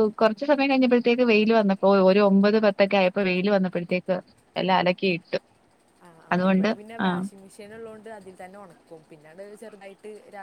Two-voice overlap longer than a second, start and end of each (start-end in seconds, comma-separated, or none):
none